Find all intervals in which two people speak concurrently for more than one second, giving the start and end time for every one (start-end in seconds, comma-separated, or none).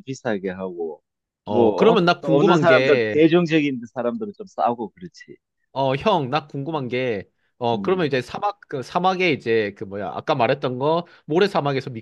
1.5-3.2